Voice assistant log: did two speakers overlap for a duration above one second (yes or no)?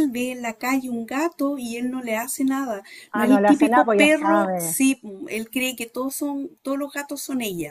yes